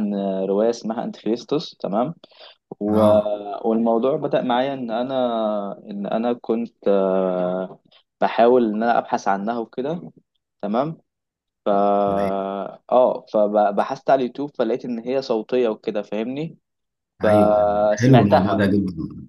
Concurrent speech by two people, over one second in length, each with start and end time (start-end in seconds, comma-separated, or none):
17.2-18.6